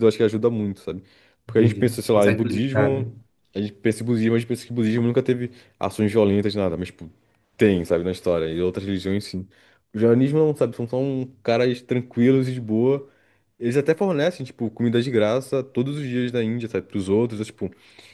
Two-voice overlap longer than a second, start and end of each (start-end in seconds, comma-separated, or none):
1.5-3.1